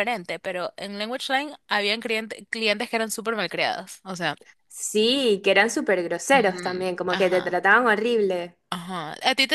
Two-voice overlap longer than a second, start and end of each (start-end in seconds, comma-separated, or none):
6.3-7.6